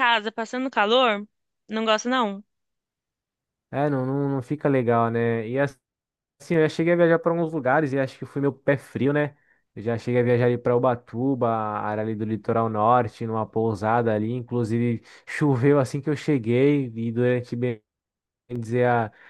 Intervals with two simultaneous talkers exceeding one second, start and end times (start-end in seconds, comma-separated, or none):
none